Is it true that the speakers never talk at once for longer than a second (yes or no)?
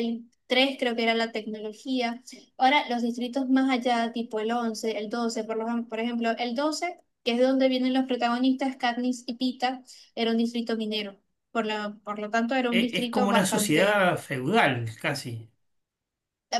no